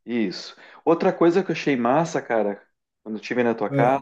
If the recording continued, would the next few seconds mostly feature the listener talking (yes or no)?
no